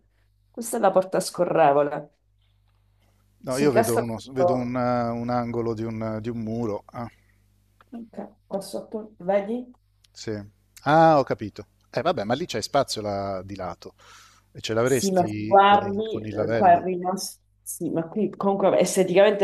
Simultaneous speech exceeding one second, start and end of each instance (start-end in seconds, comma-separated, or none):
3.5-4.8, 14.8-16.9